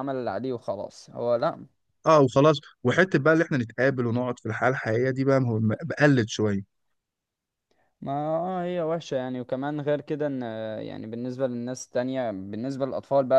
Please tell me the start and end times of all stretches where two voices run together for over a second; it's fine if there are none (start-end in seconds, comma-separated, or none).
none